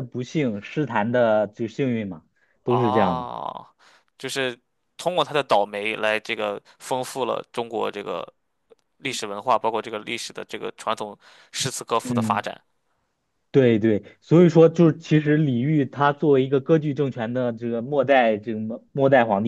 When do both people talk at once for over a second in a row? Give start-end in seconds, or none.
none